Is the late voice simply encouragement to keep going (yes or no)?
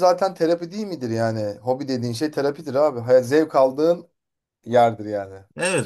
no